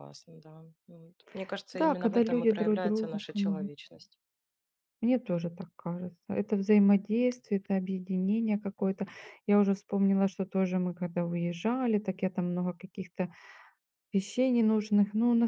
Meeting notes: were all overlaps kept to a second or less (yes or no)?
no